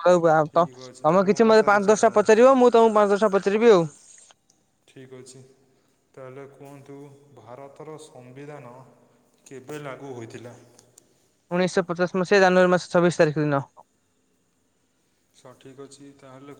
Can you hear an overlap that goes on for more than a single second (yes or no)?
yes